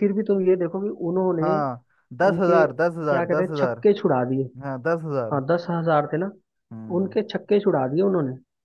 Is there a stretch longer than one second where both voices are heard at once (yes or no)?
yes